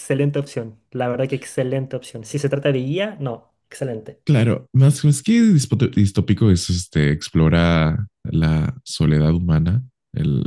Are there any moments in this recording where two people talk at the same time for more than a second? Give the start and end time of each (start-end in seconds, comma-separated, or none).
none